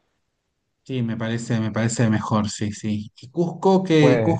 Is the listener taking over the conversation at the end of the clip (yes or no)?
no